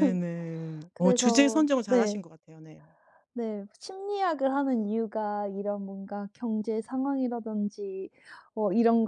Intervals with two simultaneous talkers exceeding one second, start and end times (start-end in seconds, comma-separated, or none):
0.9-2.2